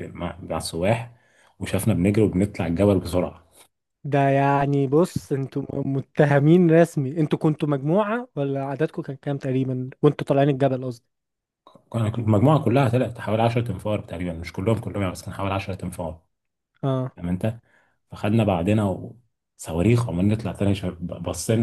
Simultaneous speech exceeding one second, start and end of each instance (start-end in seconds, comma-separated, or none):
none